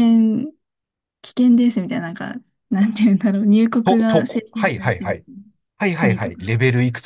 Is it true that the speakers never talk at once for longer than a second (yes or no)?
no